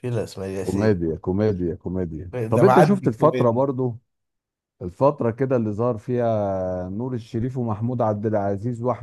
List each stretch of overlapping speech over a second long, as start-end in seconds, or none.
2.3-3.6